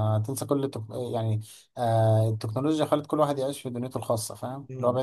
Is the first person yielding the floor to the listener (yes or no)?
no